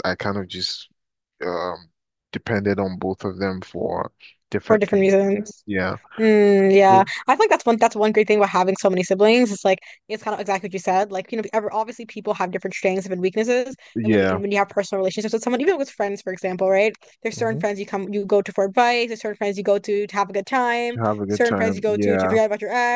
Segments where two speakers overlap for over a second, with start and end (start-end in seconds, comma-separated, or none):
20.9-22.4